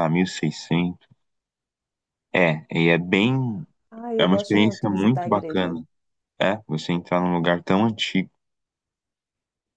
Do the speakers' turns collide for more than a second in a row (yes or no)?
yes